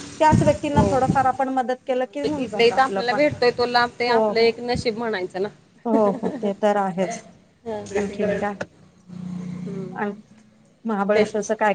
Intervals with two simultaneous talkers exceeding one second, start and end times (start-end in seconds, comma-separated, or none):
2.0-3.2